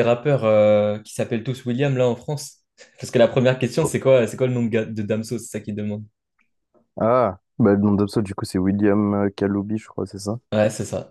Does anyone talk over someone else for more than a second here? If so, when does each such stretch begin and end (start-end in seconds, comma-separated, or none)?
none